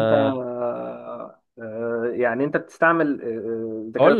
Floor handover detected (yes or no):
yes